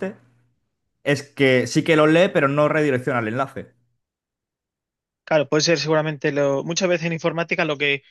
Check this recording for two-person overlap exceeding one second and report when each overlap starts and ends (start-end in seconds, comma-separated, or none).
none